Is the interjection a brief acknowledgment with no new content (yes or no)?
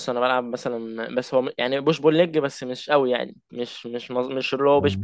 yes